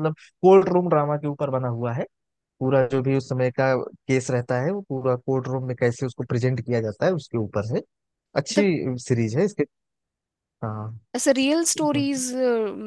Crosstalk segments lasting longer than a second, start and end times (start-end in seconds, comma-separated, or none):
none